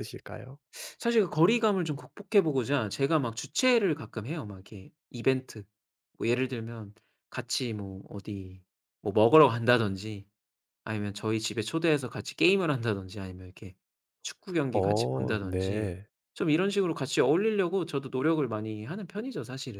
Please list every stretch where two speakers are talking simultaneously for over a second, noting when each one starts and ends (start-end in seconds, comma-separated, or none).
14.7-15.9